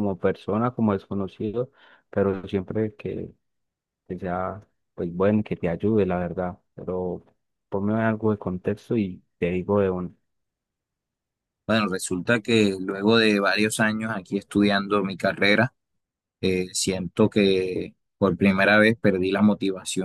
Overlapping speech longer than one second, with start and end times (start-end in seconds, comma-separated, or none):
none